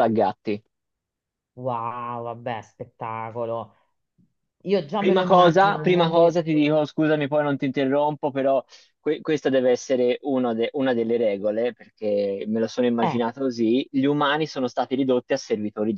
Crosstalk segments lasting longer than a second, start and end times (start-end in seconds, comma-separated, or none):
5.0-6.5